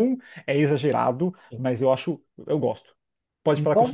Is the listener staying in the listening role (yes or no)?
yes